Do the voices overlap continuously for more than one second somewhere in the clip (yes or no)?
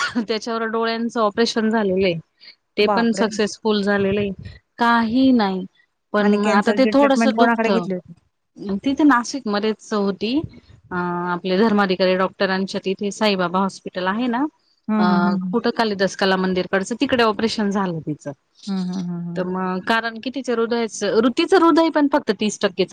yes